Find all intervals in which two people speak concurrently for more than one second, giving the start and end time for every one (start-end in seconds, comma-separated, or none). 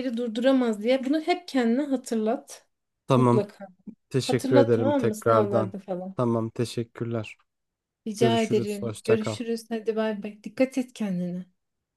4.3-5.7, 8.2-9.4